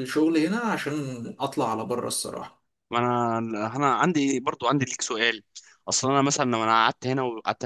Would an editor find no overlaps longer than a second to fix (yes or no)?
yes